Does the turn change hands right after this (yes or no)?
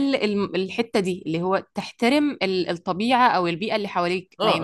yes